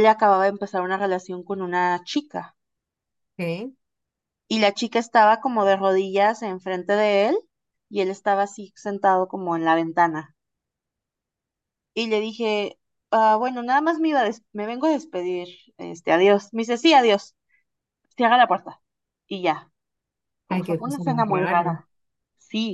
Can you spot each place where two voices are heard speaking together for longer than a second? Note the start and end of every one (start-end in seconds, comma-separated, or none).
20.5-21.8